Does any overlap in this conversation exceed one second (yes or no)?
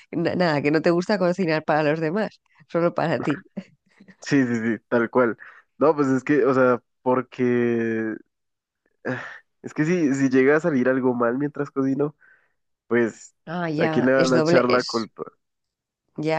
yes